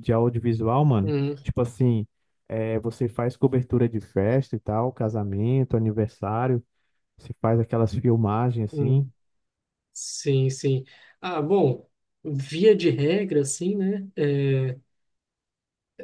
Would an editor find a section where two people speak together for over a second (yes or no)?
no